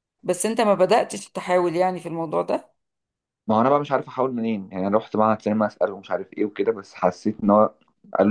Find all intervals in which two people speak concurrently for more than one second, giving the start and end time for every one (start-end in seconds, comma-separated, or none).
none